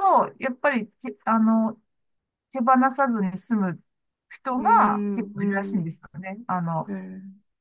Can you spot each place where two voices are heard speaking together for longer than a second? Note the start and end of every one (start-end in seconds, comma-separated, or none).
4.6-5.9